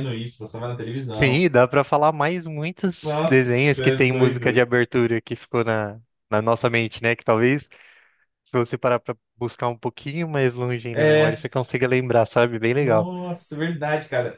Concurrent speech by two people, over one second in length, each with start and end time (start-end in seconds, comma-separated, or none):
3.0-4.7